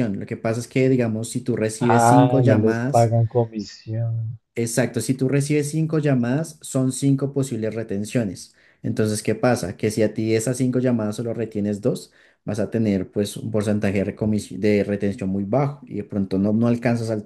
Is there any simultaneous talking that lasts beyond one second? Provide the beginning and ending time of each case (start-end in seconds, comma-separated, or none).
1.8-3.1